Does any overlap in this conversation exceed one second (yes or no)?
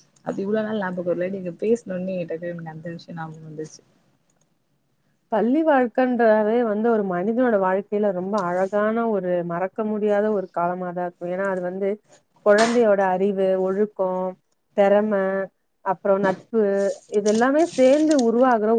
no